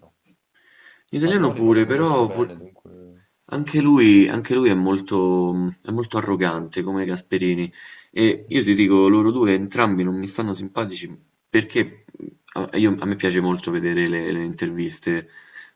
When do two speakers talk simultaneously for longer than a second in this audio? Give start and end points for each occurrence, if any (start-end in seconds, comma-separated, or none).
1.2-2.5